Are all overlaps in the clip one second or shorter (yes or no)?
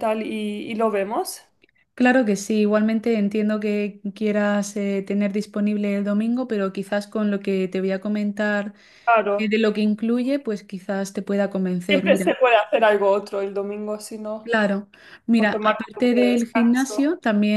no